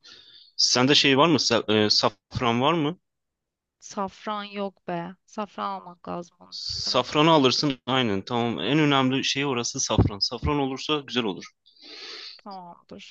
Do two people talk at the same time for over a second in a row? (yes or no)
no